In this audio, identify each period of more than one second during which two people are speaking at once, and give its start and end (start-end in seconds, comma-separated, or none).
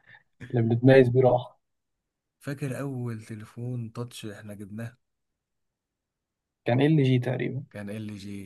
none